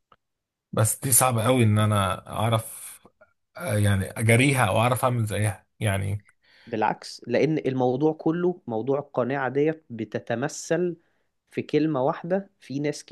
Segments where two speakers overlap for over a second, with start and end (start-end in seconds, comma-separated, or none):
none